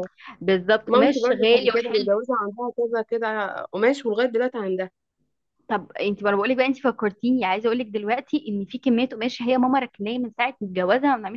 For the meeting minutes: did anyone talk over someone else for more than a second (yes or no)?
yes